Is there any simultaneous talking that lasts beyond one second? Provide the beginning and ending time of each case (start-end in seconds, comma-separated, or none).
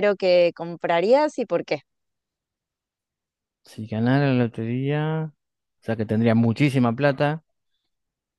none